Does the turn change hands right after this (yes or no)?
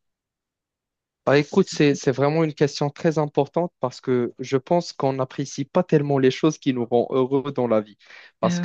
no